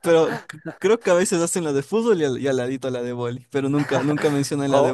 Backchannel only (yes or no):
no